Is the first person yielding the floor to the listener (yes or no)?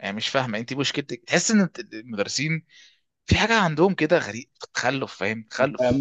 yes